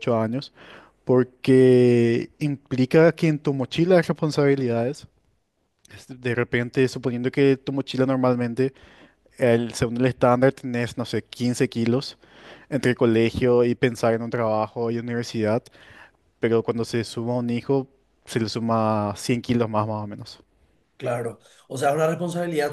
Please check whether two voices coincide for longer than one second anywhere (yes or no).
no